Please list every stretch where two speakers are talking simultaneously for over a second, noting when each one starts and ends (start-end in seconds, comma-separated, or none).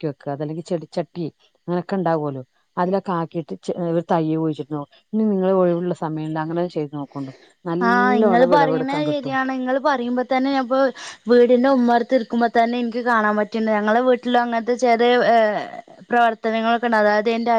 7.9-9.4